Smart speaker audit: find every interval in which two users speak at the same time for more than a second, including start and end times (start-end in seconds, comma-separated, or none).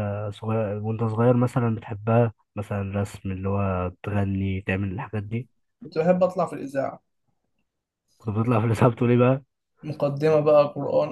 none